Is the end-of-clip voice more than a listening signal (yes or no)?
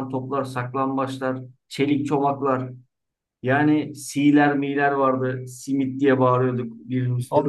no